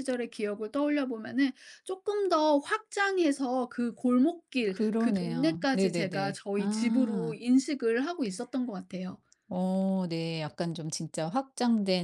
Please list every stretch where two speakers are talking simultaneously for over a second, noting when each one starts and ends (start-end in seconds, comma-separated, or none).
4.7-7.4